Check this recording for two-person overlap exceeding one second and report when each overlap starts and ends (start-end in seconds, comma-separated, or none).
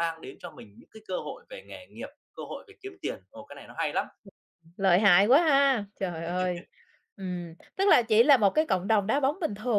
none